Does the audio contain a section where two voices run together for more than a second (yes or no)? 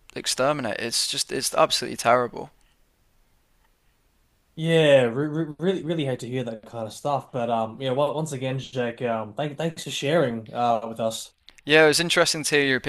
no